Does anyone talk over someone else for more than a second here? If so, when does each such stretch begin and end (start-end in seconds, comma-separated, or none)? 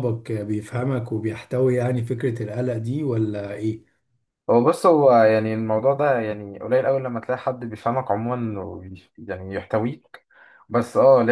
none